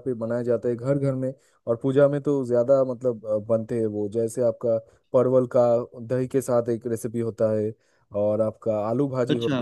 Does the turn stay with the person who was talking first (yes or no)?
yes